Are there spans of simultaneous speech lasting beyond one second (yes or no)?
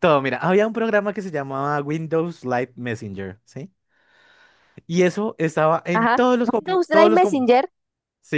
yes